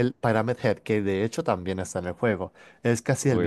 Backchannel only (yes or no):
yes